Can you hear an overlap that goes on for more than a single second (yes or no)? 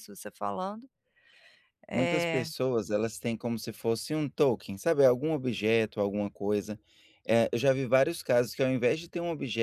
no